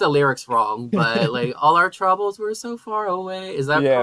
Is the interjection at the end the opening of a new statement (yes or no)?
yes